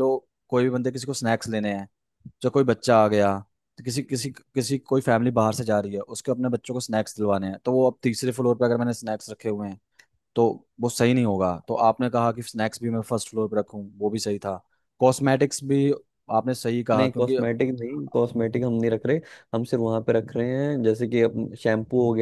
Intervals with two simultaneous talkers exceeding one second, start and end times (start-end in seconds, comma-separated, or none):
none